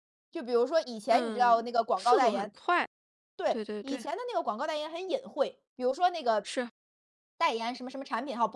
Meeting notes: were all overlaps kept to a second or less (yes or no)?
no